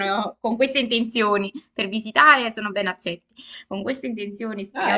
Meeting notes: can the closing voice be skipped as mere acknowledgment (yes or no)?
no